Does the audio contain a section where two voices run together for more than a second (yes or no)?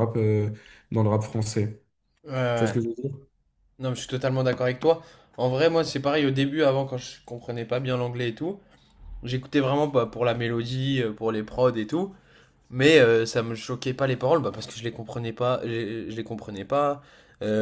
no